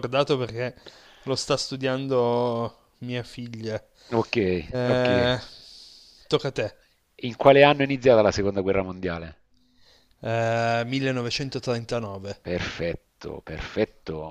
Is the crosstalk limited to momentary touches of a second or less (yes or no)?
yes